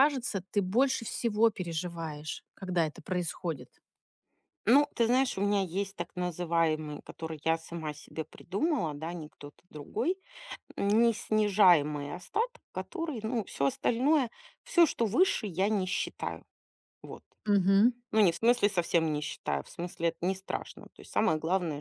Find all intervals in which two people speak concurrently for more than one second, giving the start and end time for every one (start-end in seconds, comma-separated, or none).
none